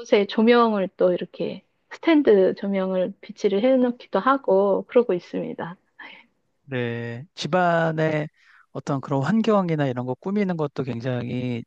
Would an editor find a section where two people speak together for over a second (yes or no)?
no